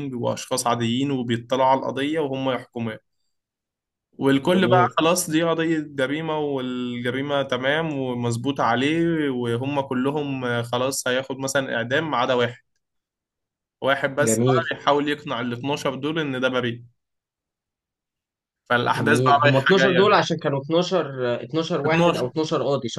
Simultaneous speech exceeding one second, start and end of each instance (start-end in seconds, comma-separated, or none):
18.9-20.1